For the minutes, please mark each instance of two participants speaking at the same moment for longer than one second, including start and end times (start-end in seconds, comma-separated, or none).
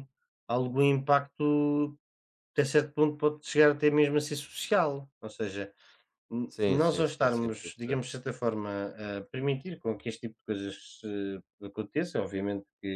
6.5-8.0